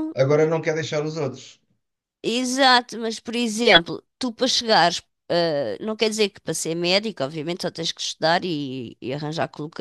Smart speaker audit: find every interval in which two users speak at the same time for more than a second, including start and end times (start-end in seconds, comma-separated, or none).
none